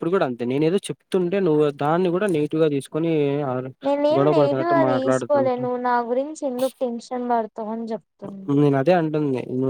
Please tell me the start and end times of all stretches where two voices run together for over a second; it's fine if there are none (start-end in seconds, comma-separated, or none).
4.2-5.7